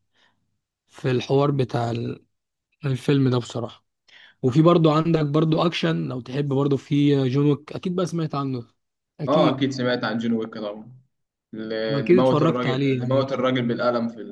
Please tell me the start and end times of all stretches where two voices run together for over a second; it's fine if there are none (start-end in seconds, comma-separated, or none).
11.9-13.2